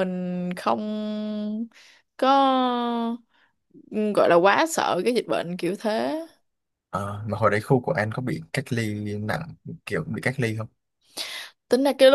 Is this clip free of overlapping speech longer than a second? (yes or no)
yes